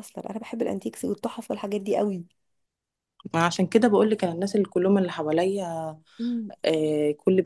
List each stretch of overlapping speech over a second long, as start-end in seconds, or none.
none